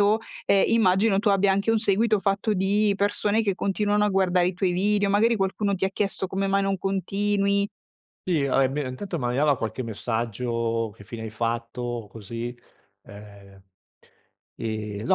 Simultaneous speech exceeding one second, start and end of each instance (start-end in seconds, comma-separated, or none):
none